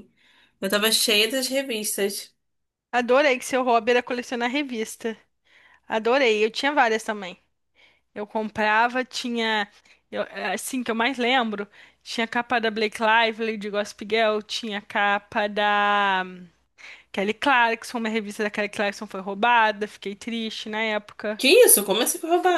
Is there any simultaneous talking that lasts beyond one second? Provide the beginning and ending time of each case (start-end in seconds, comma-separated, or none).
none